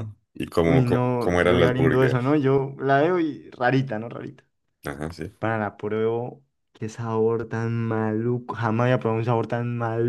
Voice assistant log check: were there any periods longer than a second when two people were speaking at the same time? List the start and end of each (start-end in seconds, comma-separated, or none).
0.6-2.4